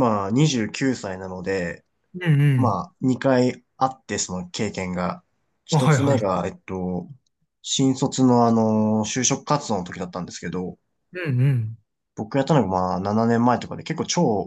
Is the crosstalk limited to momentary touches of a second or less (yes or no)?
yes